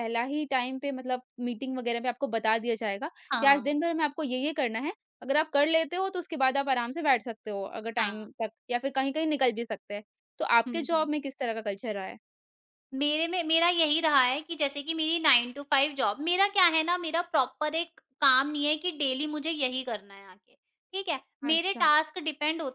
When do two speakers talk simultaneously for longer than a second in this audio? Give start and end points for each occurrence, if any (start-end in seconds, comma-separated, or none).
none